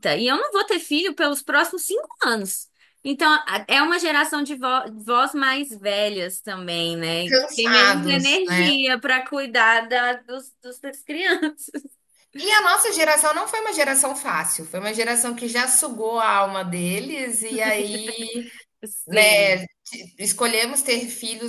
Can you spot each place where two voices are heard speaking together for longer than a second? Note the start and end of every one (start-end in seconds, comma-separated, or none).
7.2-8.7